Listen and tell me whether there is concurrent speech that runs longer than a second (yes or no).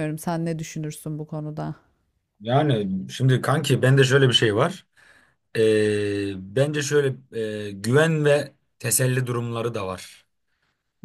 no